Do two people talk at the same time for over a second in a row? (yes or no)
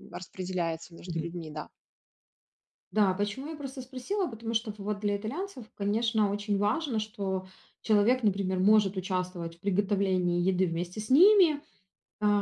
no